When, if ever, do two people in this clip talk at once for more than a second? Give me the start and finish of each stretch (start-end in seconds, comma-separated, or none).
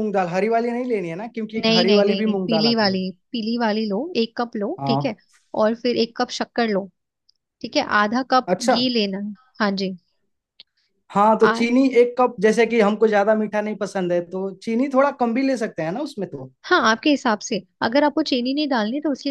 1.6-3.0